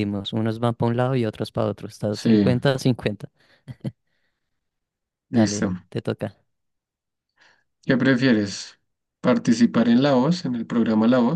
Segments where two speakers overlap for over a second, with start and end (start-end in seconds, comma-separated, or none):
none